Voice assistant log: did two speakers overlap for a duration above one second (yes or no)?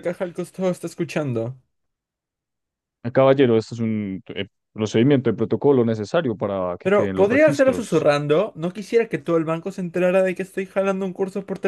yes